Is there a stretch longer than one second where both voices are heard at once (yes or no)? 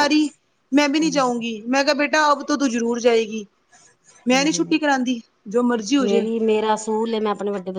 no